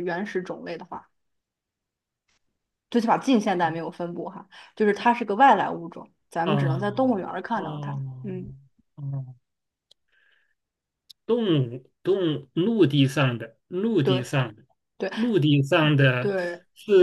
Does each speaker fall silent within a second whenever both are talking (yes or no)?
no